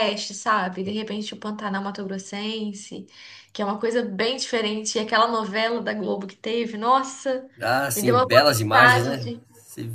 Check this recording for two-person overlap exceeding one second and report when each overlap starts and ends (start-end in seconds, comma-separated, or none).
7.9-9.4